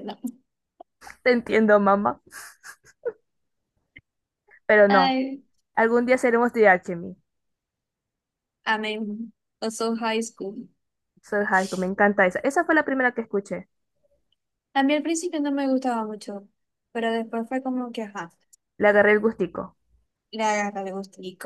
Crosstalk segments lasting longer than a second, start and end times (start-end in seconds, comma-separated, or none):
none